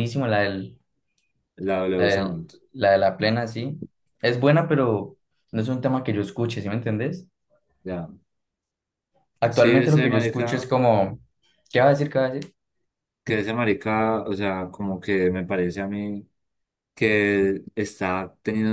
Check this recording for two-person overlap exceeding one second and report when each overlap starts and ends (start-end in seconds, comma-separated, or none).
9.5-10.8